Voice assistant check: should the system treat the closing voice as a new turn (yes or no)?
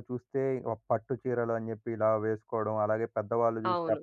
no